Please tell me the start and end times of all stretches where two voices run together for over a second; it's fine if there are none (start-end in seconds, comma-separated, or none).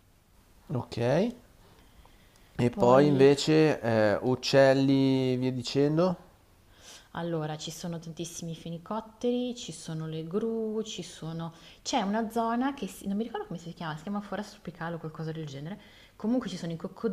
none